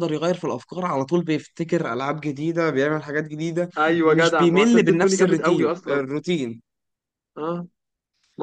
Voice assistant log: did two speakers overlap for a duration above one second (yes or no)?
yes